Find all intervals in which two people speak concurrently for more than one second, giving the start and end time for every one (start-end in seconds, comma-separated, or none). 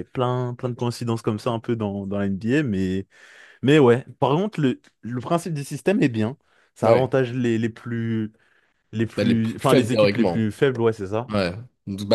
9.2-10.4